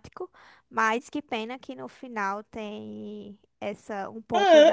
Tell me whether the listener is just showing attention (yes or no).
no